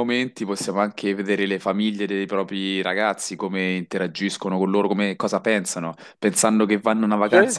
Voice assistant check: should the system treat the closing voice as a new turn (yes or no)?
no